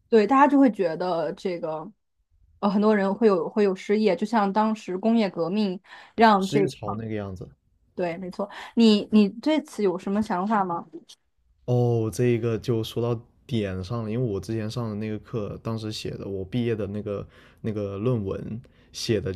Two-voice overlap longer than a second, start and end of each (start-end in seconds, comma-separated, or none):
none